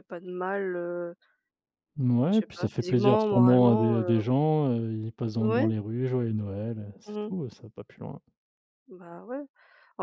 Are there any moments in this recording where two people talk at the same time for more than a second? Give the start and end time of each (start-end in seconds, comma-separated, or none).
2.3-4.3